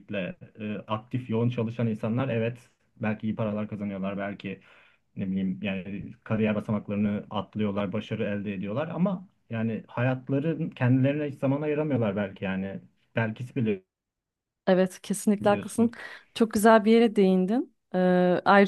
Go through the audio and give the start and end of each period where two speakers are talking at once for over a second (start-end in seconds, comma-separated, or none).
none